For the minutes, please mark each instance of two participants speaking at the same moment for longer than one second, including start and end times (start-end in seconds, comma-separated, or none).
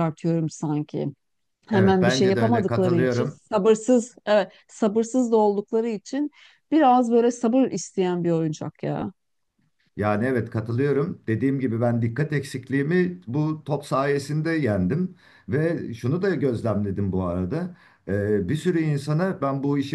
1.7-3.4